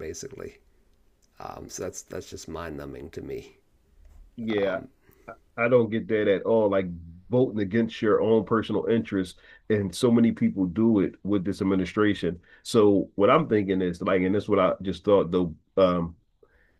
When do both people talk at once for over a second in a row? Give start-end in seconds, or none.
none